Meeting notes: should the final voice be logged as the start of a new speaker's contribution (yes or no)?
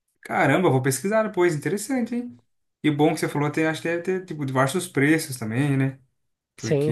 yes